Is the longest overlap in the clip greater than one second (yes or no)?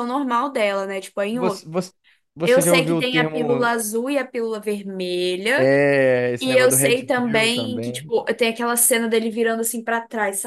yes